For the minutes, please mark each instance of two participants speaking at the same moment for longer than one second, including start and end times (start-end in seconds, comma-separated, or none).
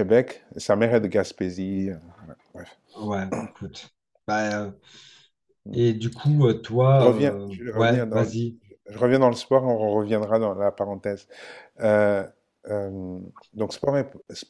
6.9-8.3